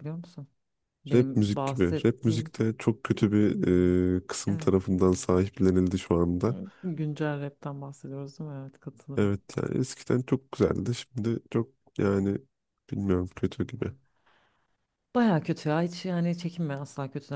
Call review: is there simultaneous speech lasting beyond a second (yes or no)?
yes